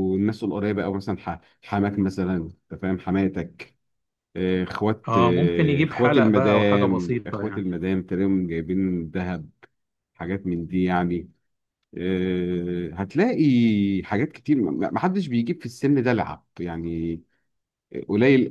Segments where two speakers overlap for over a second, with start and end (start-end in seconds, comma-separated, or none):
5.1-7.7